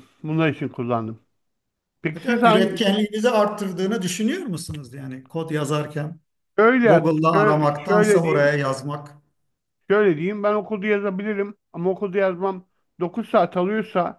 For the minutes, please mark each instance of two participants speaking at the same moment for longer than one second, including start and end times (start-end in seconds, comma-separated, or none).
6.8-8.6